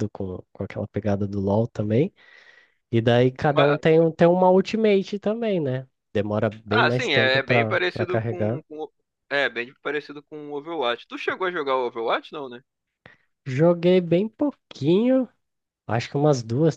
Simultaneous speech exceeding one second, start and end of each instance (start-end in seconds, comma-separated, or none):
6.7-8.6